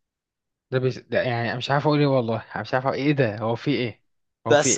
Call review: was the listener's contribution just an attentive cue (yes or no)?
no